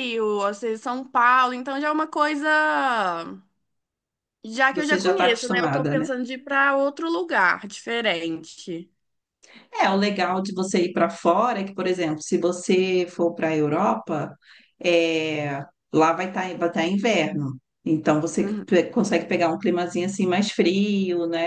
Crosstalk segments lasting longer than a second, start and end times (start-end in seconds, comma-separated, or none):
4.7-6.1